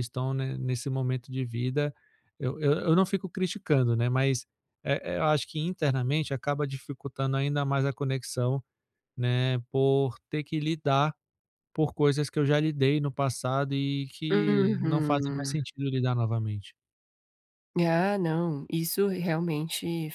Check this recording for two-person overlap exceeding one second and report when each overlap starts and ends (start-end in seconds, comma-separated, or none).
14.3-15.6